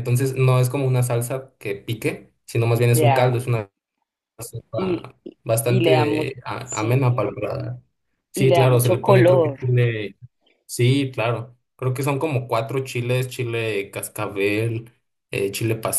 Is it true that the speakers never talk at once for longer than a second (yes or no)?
no